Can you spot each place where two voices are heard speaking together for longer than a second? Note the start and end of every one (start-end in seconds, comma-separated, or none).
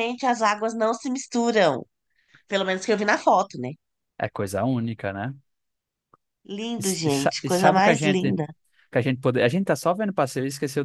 6.8-8.3